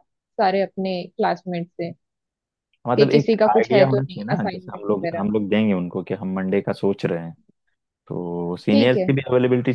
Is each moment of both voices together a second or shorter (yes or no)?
no